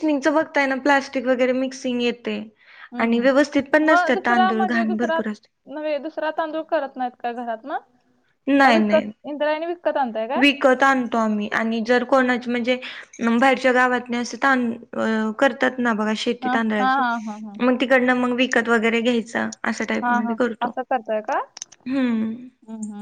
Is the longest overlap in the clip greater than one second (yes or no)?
yes